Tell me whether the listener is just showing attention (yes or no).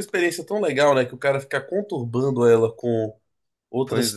yes